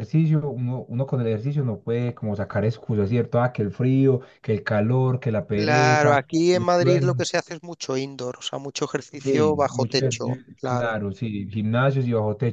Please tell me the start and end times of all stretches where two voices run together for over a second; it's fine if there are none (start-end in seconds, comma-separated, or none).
5.5-7.2, 9.2-11.0